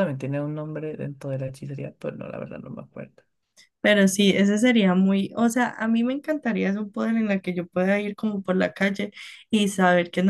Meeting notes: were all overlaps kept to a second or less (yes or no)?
yes